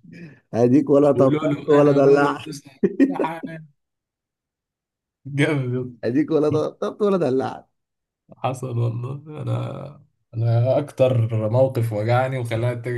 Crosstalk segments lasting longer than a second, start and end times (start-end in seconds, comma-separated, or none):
1.1-2.5